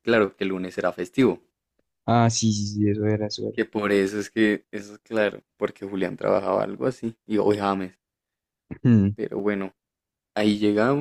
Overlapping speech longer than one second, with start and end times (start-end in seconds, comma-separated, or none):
none